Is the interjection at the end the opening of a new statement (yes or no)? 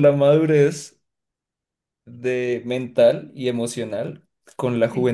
no